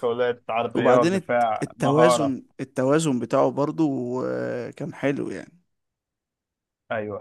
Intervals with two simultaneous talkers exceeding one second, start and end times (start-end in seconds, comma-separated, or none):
0.8-2.3